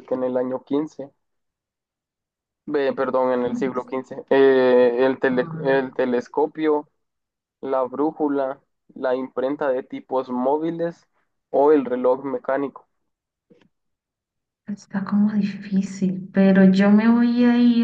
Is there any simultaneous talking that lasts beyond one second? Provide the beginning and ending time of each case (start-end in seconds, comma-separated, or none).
none